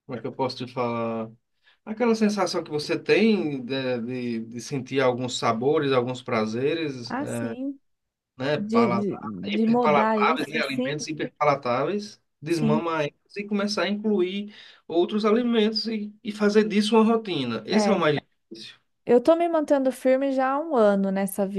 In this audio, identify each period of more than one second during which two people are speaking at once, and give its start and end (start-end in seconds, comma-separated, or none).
8.6-11.0